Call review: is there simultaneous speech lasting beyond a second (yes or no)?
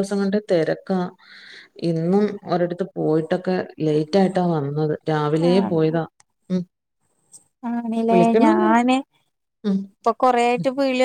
no